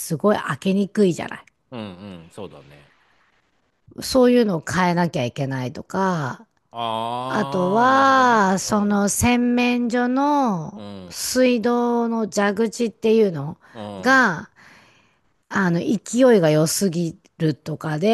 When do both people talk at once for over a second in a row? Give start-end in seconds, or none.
7.3-9.0